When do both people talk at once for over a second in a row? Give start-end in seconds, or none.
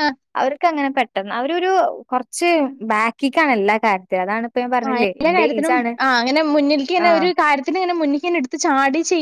none